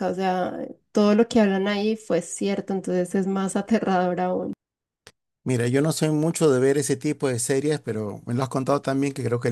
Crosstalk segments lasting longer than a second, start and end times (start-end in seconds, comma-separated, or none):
none